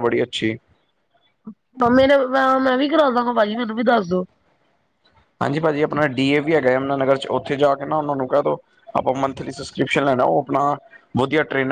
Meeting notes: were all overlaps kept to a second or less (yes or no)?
yes